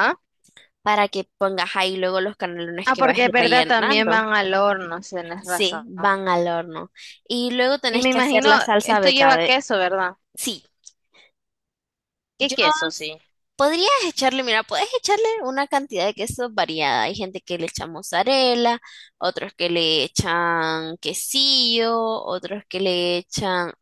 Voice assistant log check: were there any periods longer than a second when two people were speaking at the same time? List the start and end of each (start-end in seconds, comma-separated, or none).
2.8-4.3, 7.9-9.6